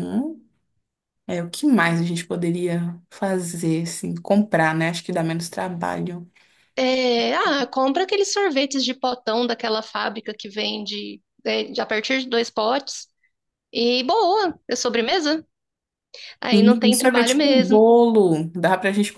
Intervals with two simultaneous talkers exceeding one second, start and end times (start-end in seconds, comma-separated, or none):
16.5-17.8